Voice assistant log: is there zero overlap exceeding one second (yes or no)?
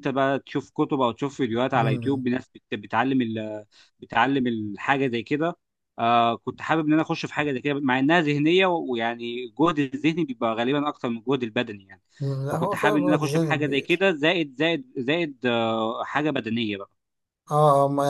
no